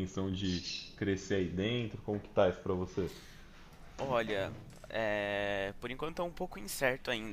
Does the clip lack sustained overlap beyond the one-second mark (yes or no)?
yes